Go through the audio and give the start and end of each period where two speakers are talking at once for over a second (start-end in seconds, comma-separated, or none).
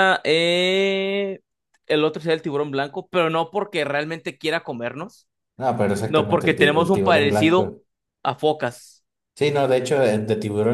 6.0-7.7